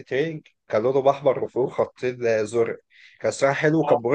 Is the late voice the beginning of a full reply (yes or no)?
no